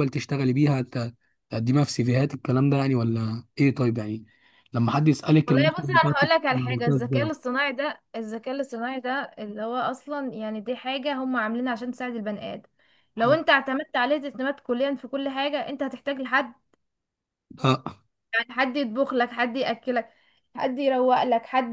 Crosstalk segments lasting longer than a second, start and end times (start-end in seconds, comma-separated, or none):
5.5-7.3